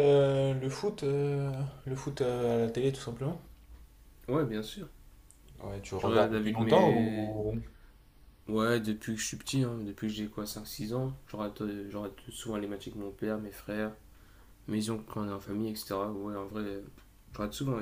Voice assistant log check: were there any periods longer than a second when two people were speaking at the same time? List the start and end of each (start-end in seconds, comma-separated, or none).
6.0-7.3